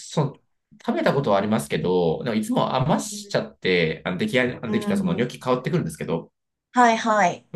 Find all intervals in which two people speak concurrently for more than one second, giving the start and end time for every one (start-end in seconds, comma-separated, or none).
none